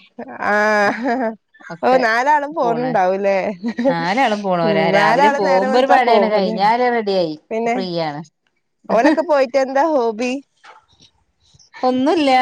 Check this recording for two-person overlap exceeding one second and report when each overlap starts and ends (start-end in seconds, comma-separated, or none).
4.7-6.6